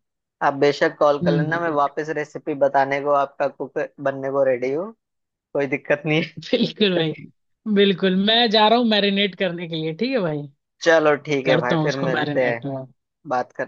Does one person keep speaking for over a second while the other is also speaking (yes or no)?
yes